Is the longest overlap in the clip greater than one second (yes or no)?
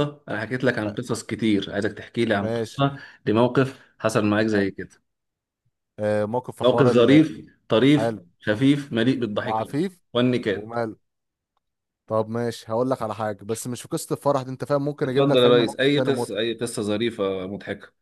yes